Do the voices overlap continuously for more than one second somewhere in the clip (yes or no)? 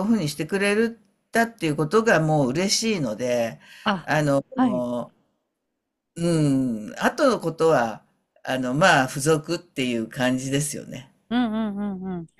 no